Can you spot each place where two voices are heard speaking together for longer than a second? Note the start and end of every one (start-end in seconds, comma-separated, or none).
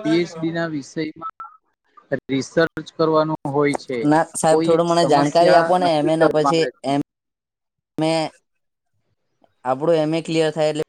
4.5-6.9